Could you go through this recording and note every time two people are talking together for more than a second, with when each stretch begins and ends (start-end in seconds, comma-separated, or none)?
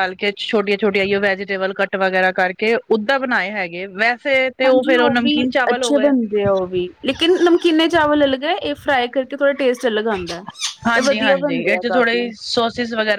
11.0-12.3